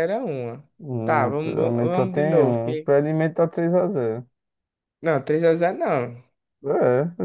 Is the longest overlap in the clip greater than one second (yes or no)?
yes